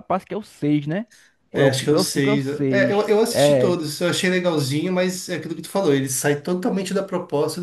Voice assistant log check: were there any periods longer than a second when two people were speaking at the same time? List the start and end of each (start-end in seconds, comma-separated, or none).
1.5-3.8